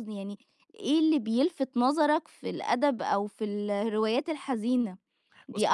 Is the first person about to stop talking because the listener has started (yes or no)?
no